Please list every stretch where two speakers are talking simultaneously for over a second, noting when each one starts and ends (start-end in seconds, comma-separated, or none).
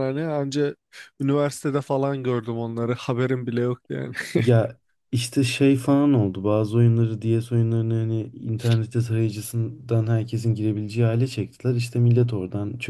none